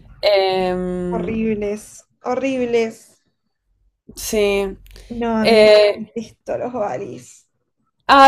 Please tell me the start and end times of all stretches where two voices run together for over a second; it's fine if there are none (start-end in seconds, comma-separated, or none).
none